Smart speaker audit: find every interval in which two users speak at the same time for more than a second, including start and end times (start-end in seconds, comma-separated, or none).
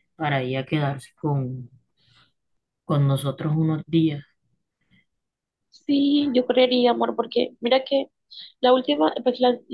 none